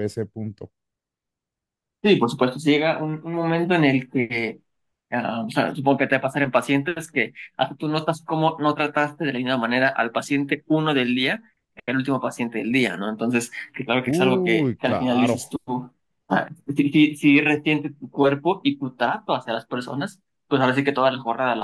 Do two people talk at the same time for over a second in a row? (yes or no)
yes